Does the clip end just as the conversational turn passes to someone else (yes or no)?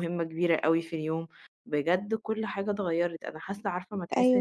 no